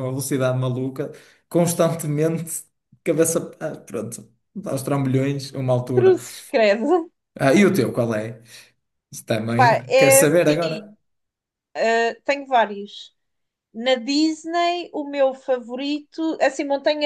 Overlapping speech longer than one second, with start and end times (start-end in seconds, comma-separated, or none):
9.5-10.9